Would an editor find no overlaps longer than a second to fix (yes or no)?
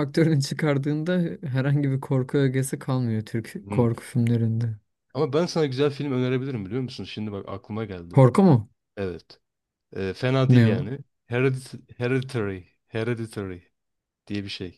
yes